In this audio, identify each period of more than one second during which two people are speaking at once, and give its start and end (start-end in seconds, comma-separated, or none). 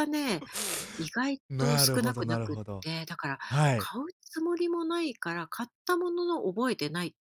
1.5-2.9